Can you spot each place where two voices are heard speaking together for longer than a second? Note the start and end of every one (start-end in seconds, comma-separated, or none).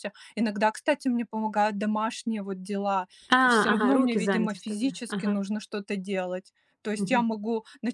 3.7-5.4